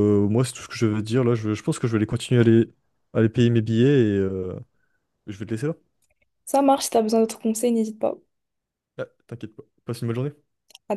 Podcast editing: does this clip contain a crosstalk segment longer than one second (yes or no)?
no